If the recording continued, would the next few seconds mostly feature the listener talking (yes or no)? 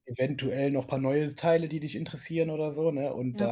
no